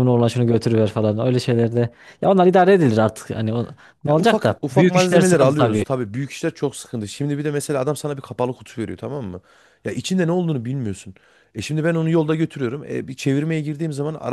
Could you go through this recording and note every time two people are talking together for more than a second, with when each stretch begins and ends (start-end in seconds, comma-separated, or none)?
4.0-5.8